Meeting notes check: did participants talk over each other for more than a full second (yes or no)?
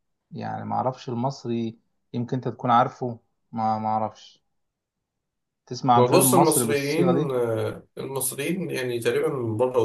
yes